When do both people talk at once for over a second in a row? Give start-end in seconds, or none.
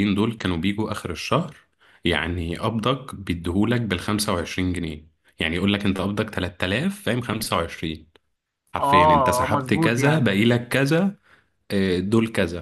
8.8-10.4